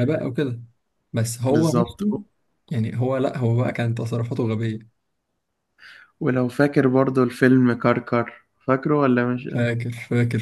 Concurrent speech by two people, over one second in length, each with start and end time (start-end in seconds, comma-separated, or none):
none